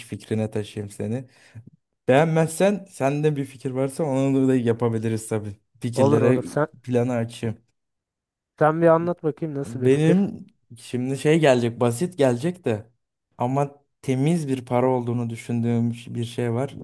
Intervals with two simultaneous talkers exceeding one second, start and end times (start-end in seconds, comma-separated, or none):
none